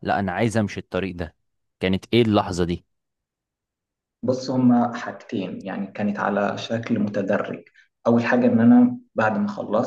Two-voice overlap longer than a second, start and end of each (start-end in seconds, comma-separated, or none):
none